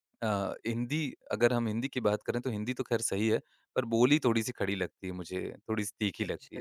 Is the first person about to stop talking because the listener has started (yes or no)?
yes